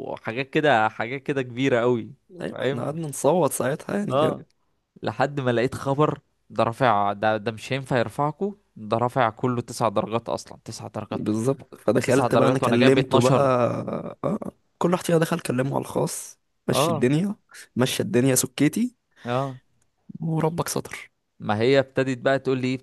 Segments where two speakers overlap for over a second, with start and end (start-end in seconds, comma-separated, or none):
12.1-13.4